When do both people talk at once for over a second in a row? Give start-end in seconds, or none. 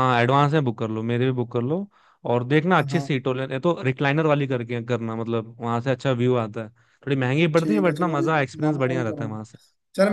7.6-9.3